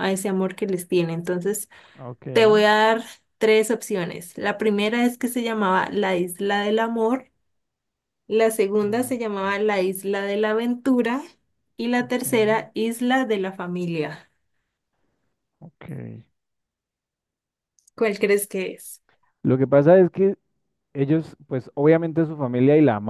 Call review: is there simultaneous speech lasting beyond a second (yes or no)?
no